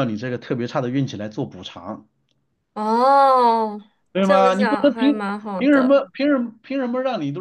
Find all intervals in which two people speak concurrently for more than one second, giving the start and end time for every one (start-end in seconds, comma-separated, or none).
4.2-6.0